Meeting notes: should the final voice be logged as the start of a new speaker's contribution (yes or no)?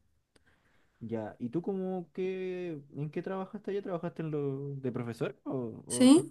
yes